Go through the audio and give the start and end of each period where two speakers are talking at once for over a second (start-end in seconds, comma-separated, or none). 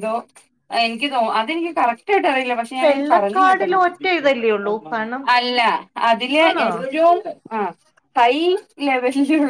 2.9-4.9